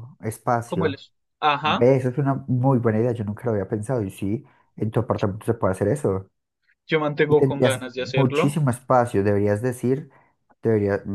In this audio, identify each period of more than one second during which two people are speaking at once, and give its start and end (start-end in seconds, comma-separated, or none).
7.3-8.6